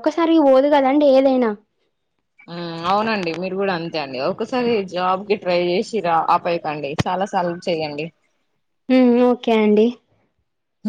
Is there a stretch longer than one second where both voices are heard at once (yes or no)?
no